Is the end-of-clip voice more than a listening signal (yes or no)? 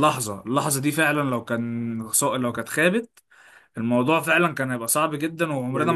yes